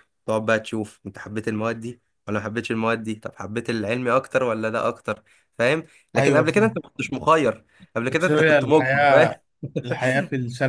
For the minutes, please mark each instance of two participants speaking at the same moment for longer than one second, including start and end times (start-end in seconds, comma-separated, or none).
8.1-9.4